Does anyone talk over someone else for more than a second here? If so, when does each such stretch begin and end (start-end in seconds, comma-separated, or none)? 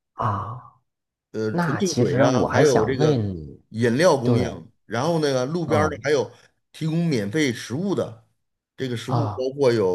1.5-3.3